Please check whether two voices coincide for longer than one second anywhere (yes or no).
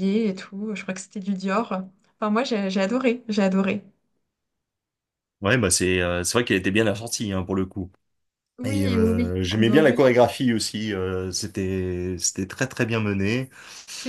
yes